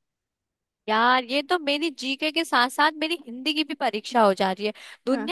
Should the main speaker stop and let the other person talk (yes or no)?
no